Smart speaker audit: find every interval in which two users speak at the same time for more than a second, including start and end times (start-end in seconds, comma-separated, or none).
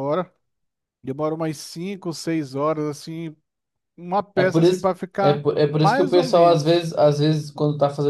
4.3-6.9